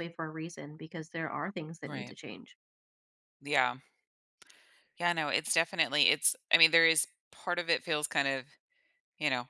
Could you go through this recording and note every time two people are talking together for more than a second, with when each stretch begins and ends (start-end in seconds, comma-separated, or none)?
none